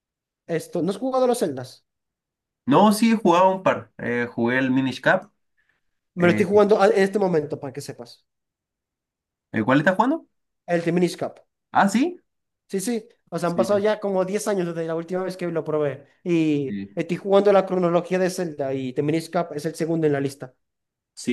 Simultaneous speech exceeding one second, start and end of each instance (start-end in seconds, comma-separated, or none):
none